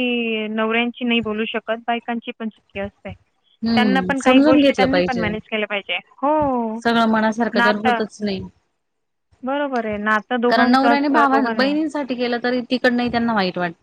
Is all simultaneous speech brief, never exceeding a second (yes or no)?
no